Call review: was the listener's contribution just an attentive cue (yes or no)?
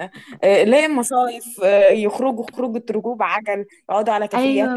no